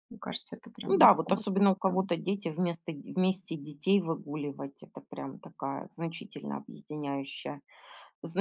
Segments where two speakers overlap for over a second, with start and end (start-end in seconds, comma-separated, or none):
0.9-2.1